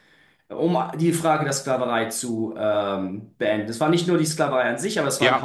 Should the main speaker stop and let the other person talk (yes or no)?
yes